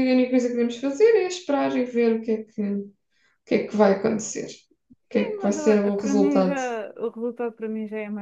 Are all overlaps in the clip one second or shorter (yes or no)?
no